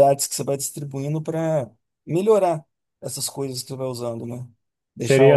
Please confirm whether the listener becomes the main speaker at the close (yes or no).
yes